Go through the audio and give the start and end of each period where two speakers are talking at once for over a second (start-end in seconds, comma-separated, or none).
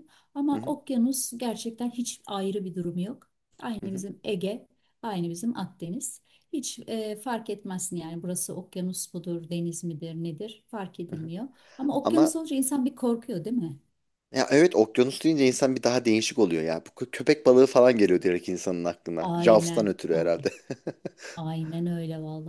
19.2-20.5